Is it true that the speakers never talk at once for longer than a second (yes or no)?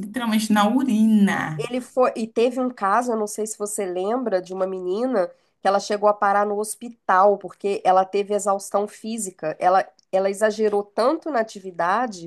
yes